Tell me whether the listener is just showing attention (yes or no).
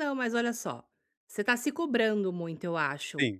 yes